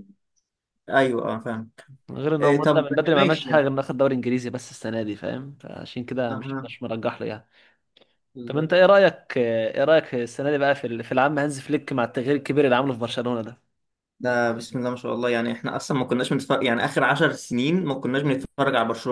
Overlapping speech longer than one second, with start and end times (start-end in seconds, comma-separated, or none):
2.4-3.7